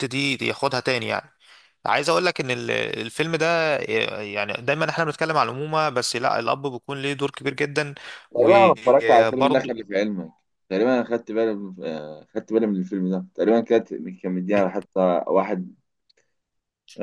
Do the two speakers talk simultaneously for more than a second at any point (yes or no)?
yes